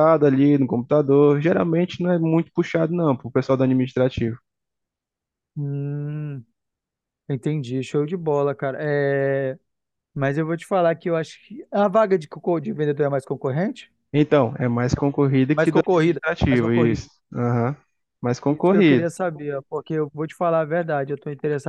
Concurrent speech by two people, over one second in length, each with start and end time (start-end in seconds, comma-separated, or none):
15.5-17.1